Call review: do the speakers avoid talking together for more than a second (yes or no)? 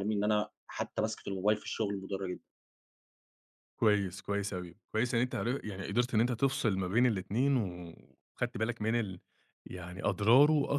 yes